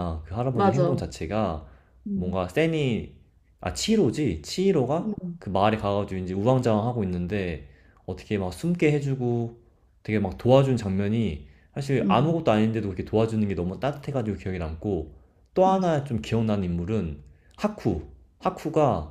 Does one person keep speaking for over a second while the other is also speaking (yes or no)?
no